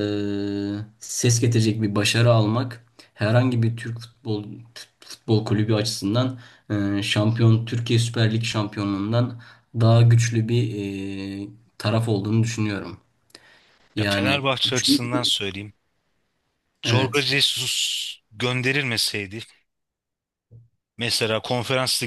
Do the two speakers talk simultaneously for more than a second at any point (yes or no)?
yes